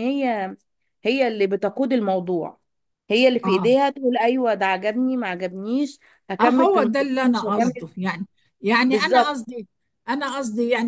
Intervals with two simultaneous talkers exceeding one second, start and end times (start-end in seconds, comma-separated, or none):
6.4-7.9